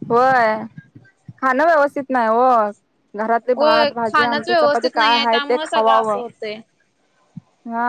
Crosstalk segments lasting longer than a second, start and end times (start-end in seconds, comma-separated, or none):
3.6-6.2